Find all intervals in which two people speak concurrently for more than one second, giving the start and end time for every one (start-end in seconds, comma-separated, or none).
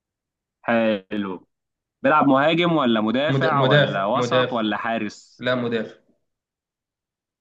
3.3-4.6